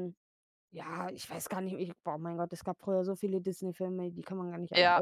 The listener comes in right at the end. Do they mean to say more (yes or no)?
yes